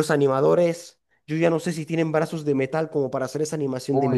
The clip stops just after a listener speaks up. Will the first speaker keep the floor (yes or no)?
no